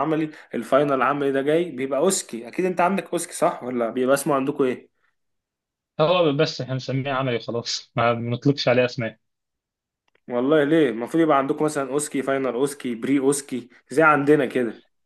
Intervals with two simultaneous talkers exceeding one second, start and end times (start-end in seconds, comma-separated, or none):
none